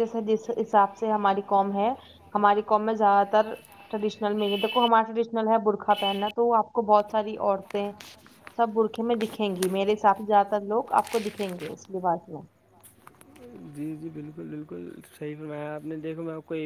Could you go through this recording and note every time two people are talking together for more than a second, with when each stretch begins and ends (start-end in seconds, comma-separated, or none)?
none